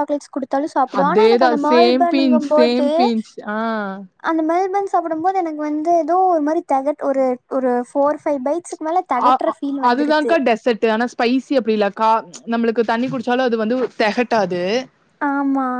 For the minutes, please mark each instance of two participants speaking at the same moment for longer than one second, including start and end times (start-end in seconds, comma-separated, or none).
1.0-2.9